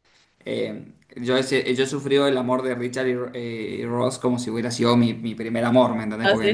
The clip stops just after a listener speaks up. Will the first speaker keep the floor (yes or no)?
yes